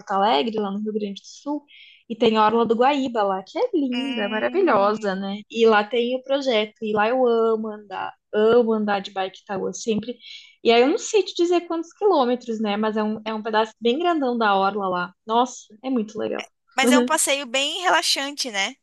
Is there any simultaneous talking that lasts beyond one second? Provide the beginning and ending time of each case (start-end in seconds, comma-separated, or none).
3.9-5.4